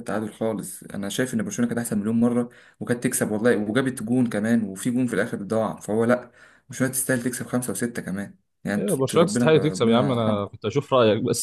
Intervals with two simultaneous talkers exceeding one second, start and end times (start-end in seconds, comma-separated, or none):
8.8-10.5